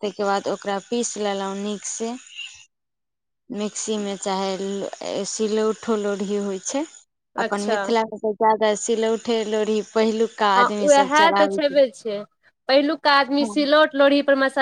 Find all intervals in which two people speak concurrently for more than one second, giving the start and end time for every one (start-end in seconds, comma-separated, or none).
none